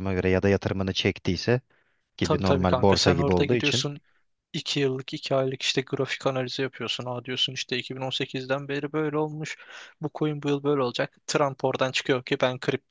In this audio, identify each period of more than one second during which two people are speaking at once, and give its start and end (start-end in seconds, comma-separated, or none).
2.2-3.9